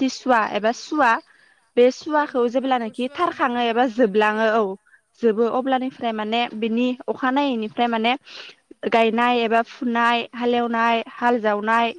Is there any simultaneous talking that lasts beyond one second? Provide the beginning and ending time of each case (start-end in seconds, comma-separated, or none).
2.1-4.6